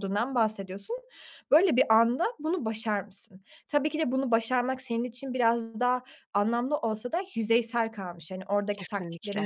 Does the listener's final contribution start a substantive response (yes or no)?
no